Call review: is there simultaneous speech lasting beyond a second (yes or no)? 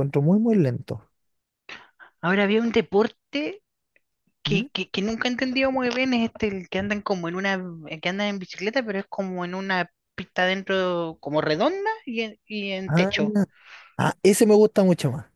no